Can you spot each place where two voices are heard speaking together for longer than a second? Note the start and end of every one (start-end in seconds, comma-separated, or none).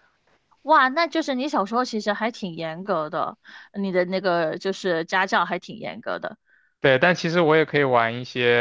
none